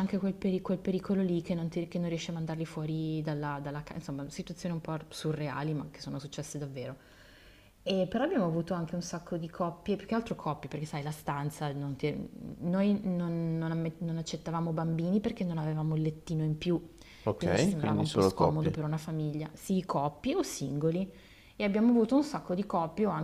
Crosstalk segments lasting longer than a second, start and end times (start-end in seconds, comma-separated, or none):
17.4-18.8